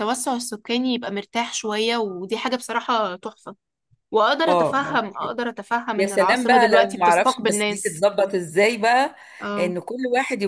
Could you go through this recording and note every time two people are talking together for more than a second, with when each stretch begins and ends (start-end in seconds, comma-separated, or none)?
6.0-8.1